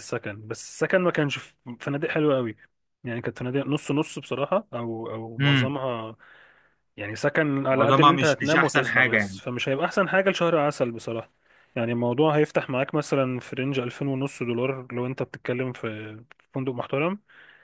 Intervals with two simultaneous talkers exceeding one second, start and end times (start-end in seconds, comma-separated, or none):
7.7-9.4